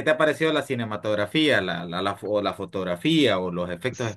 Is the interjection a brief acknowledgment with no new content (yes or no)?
no